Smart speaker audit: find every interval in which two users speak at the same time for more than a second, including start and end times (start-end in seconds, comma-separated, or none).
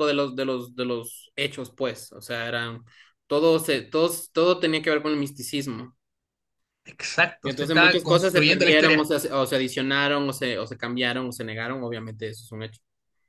7.4-9.1